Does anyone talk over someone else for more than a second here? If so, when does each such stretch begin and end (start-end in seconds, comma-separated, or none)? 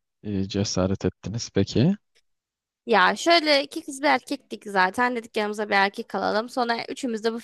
none